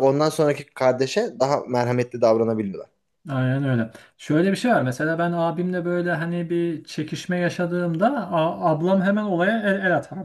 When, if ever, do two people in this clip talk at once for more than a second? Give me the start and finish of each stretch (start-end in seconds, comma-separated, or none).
none